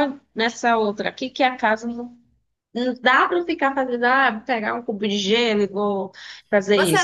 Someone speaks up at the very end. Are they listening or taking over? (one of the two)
taking over